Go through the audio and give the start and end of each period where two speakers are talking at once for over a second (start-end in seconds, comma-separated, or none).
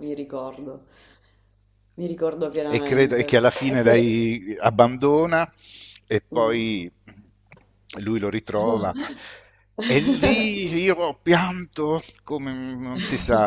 2.7-4.1